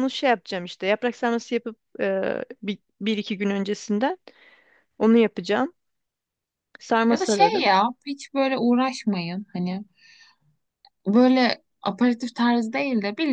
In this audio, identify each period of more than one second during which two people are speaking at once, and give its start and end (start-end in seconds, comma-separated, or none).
none